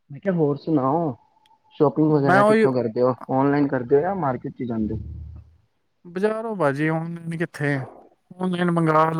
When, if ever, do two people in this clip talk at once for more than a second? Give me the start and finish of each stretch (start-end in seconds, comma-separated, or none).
none